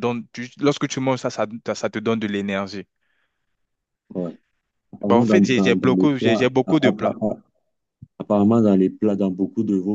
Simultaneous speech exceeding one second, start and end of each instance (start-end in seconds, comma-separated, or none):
5.0-7.2